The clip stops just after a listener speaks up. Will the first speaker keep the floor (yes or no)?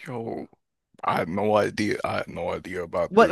no